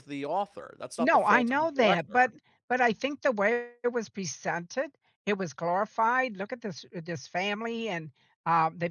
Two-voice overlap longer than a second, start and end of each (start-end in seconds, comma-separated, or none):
1.0-2.2